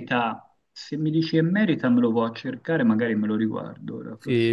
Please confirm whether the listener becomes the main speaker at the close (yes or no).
yes